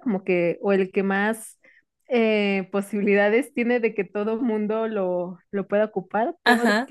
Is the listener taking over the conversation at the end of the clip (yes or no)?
no